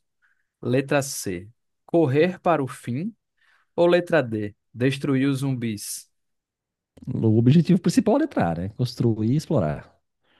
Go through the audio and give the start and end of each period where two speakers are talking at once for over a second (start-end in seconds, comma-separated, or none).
none